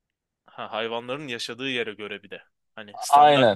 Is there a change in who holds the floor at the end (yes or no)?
yes